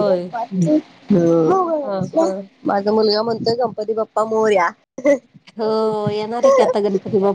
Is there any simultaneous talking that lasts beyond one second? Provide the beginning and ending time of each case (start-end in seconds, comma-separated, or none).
none